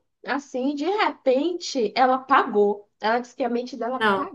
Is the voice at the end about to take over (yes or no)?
no